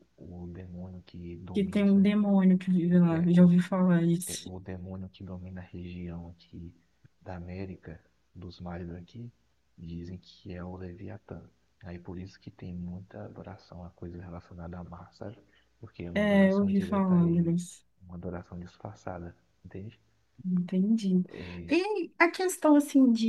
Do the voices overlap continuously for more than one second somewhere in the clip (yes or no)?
yes